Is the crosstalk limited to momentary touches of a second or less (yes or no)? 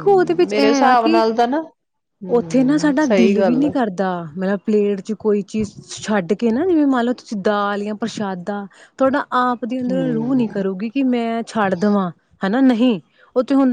no